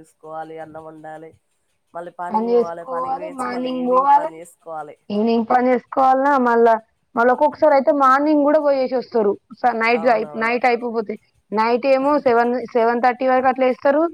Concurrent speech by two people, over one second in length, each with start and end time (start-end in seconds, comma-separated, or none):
2.3-4.3